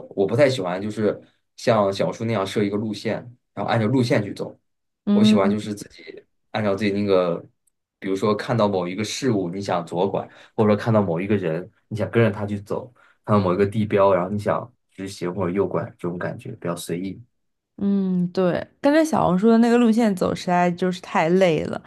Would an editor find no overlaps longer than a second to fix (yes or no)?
yes